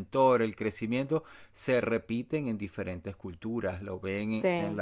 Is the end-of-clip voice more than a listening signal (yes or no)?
no